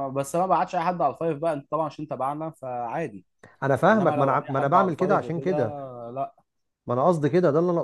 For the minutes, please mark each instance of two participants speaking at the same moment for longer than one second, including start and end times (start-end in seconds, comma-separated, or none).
3.9-5.7